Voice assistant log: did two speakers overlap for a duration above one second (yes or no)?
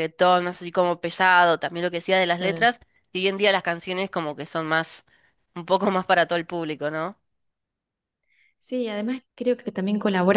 no